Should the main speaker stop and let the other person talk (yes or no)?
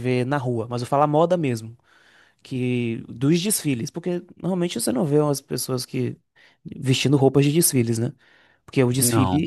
no